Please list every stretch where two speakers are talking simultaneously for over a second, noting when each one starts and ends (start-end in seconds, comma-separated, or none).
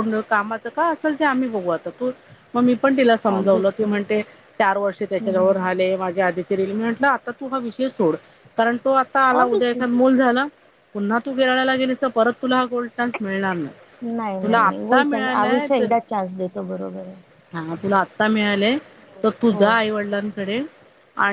14.4-15.9